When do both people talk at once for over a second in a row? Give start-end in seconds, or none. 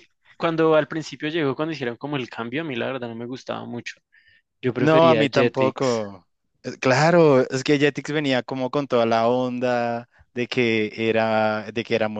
4.8-6.0